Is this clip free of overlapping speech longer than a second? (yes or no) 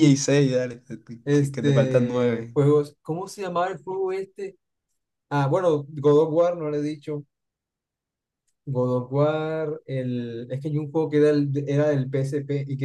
no